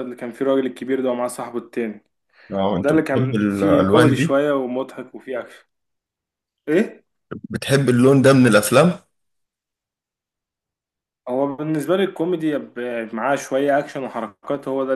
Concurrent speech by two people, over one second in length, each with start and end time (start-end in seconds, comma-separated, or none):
2.8-4.4